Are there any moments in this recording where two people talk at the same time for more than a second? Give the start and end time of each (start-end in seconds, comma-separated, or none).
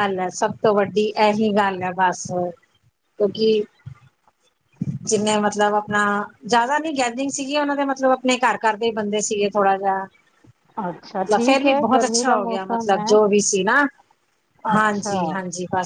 11.2-13.1